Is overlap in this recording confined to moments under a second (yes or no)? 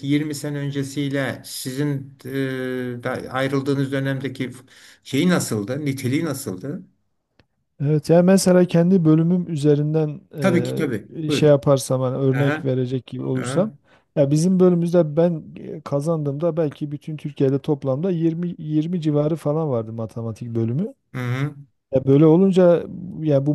yes